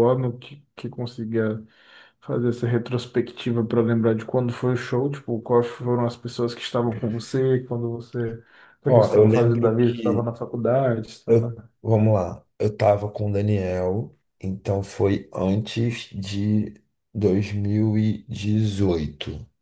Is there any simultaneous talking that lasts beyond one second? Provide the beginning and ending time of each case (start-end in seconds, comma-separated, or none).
8.9-10.3